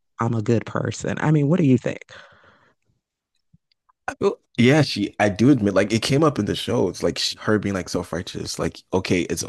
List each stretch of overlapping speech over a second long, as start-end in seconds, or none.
none